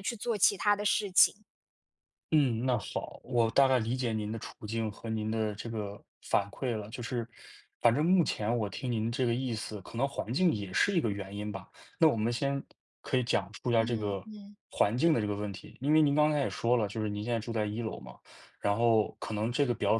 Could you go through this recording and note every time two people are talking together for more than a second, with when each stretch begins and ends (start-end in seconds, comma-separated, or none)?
none